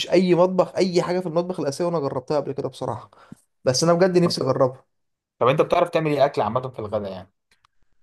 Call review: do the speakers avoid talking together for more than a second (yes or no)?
yes